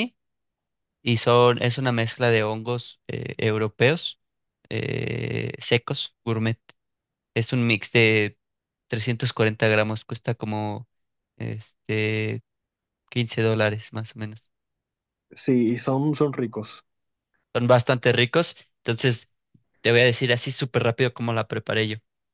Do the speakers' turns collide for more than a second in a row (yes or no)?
no